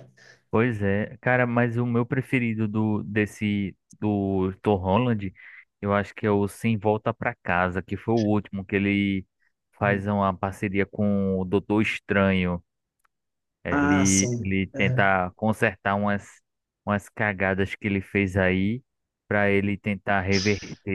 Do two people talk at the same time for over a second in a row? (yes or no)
yes